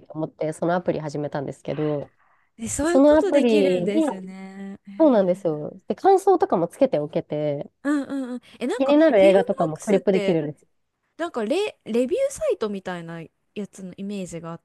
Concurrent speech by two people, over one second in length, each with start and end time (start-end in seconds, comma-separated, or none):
2.8-4.0, 8.8-10.4